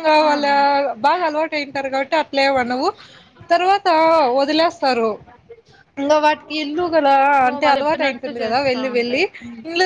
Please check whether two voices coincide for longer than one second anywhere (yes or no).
yes